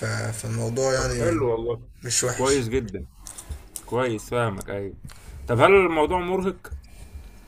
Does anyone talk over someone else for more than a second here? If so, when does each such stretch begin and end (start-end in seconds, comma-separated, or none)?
none